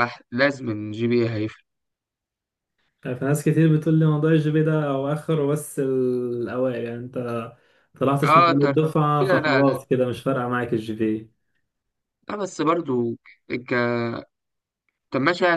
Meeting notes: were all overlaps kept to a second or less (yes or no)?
no